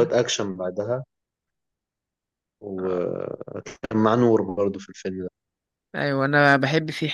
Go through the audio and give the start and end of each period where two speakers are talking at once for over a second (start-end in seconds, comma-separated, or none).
none